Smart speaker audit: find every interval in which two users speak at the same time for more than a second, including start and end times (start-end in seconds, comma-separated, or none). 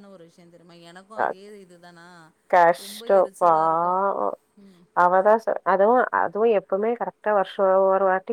none